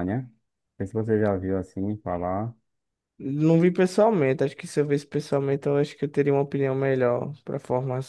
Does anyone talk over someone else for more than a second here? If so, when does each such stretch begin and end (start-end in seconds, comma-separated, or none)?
none